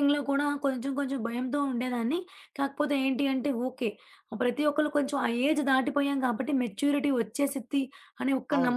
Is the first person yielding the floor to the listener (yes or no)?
no